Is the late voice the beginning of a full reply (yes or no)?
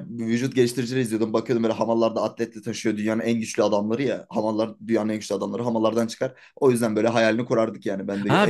yes